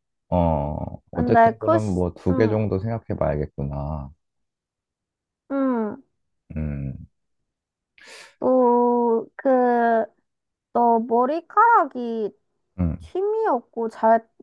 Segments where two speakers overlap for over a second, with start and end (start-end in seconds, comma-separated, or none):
1.1-2.6